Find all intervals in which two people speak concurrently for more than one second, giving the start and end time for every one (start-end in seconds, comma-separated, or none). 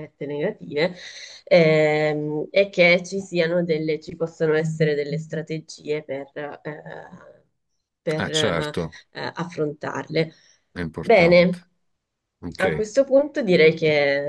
none